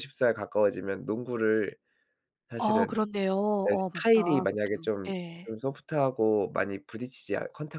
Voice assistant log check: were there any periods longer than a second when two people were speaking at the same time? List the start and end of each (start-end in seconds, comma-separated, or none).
3.6-5.5